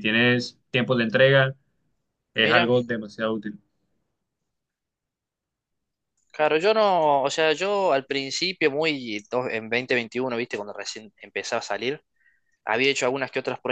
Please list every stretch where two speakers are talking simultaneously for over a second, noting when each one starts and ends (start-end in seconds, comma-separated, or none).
none